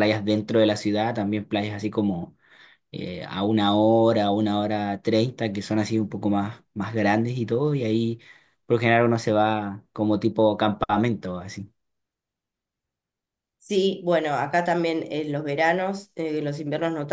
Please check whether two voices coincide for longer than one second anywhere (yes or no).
no